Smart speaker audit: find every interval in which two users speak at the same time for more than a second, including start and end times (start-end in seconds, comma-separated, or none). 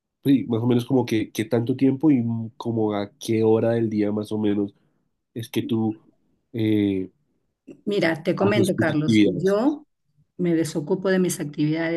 8.4-9.6